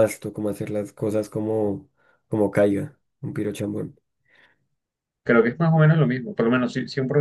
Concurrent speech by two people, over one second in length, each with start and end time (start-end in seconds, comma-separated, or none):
none